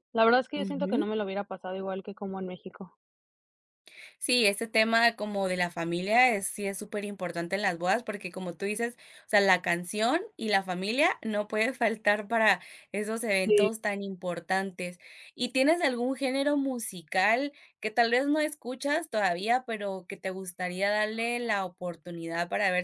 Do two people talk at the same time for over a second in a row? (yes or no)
no